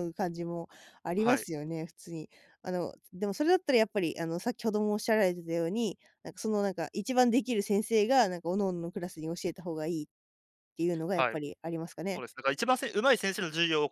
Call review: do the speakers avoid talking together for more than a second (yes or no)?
yes